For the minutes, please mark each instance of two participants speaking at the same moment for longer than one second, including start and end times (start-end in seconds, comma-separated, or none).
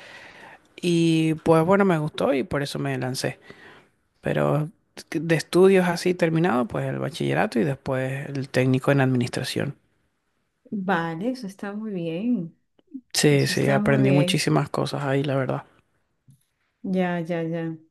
13.3-14.5